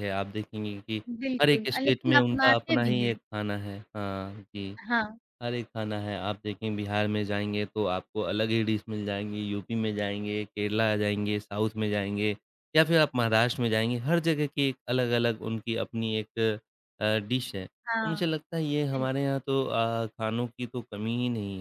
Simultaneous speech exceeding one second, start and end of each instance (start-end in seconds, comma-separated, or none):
1.4-3.1